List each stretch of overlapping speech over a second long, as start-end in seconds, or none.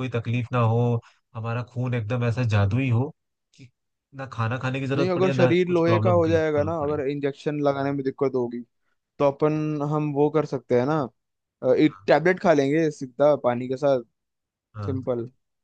4.9-7.0